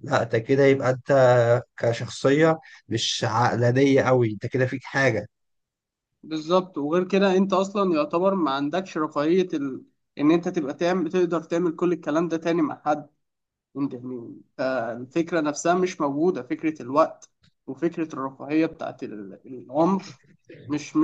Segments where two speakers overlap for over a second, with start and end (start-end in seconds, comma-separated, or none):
none